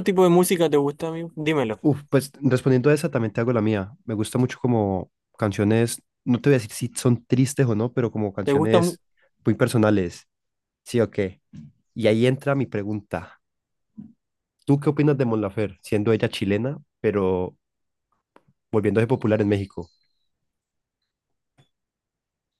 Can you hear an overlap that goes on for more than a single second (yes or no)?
no